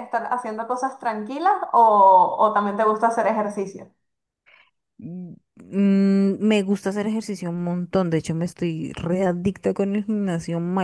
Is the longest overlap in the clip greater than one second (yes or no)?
no